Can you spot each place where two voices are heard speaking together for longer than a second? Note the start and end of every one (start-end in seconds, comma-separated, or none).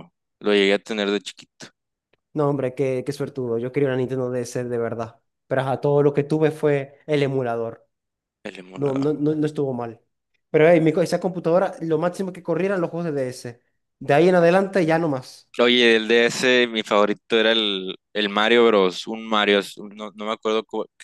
none